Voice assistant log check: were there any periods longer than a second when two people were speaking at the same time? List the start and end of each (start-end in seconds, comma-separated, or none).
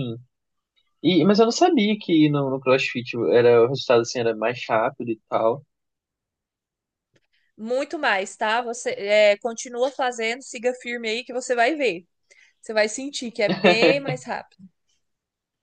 none